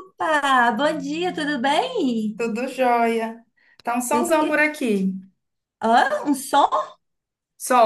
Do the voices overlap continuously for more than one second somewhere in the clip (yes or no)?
no